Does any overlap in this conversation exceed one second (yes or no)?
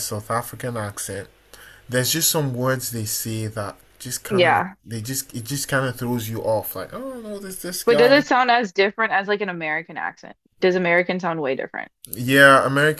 no